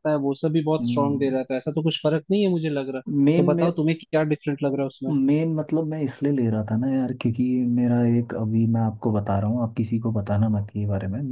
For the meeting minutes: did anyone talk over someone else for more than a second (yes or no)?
no